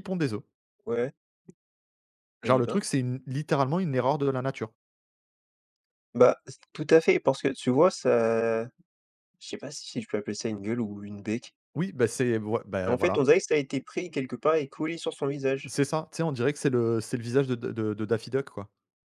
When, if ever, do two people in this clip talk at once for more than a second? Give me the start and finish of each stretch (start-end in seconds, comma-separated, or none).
none